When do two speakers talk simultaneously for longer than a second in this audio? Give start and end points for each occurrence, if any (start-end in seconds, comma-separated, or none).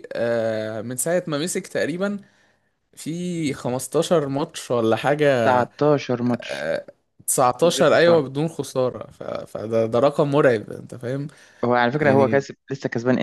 none